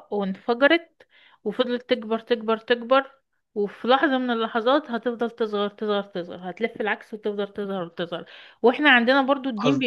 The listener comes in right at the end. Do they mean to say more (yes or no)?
no